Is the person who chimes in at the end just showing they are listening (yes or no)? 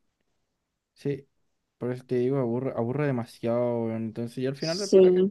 yes